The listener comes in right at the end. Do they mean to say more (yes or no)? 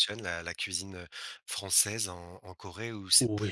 yes